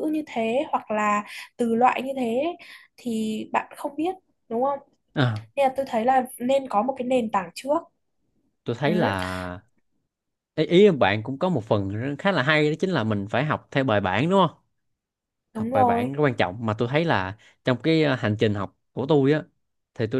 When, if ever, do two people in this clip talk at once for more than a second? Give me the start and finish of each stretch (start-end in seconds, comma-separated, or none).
none